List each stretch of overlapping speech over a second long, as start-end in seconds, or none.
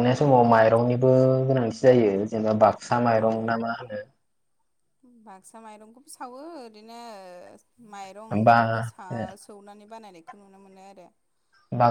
none